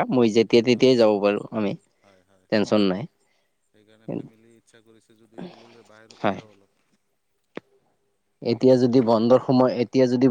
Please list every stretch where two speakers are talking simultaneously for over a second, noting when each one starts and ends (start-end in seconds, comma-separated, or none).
none